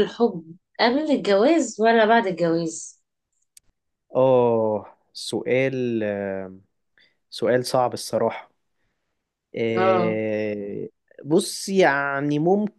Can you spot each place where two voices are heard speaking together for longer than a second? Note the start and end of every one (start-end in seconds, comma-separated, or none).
none